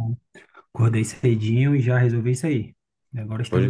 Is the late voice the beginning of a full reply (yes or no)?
yes